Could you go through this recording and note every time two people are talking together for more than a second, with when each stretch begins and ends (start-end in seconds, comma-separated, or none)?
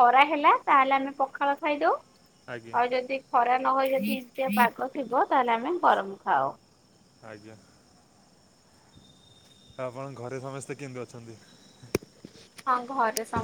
none